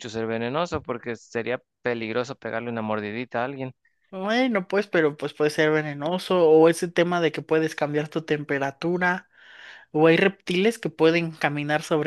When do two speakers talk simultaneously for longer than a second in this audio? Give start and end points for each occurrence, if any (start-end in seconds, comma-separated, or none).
none